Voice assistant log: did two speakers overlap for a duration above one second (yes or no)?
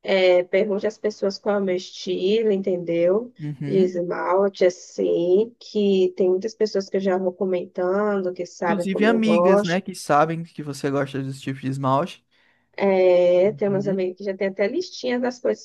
yes